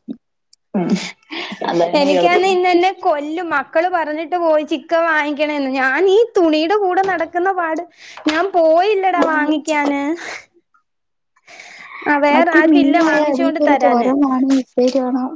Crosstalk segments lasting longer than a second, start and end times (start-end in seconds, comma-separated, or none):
12.3-14.1